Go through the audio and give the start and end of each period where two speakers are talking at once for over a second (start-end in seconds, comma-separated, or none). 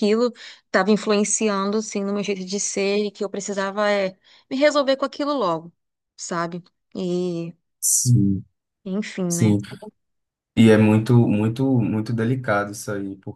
none